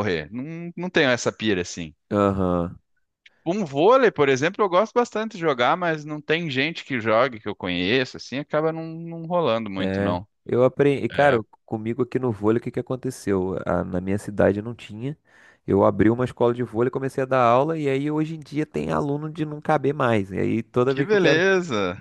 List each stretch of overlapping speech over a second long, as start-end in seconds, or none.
none